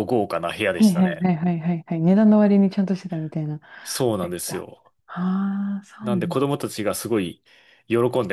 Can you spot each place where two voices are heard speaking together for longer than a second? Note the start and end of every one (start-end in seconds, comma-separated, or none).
none